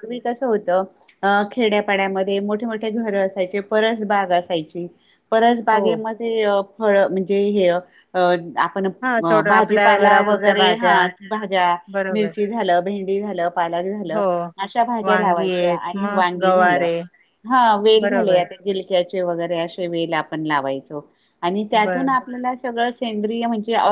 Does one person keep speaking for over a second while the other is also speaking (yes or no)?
yes